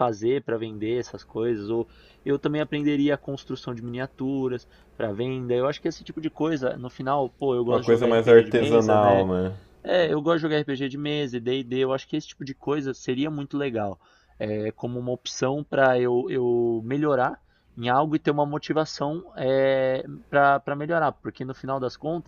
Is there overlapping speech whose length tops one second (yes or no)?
yes